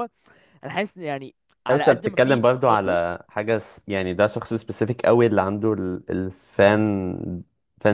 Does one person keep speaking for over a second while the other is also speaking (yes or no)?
yes